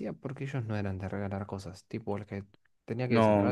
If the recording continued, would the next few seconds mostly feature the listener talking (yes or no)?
yes